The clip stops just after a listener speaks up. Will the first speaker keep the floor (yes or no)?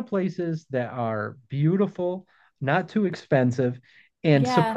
yes